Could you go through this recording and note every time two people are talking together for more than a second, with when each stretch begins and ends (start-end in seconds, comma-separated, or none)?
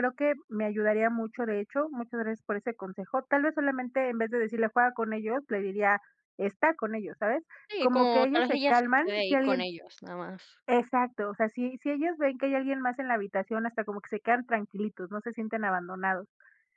7.8-9.7